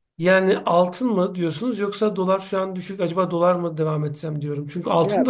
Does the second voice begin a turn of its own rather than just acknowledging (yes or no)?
yes